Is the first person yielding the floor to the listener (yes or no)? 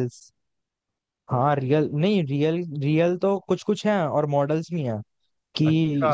no